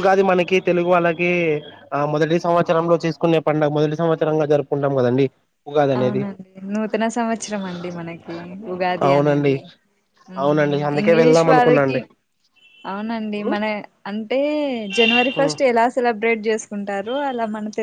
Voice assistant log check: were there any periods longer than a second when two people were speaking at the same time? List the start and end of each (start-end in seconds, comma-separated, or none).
10.4-12.0